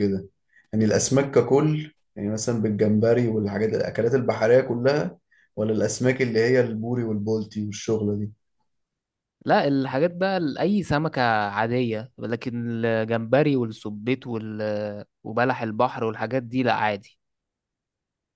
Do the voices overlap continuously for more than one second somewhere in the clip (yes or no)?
no